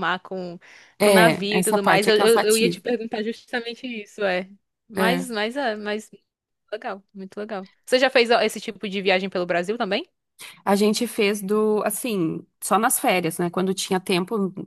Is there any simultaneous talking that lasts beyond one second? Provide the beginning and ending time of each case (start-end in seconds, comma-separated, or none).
1.0-2.8